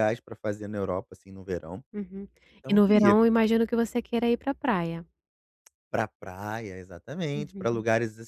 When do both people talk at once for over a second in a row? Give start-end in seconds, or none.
none